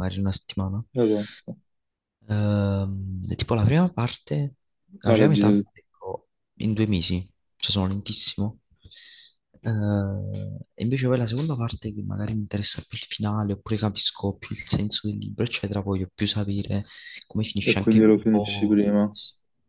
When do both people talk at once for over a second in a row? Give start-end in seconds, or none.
17.6-19.1